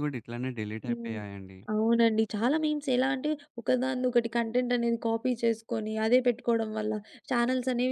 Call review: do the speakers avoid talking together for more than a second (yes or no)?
yes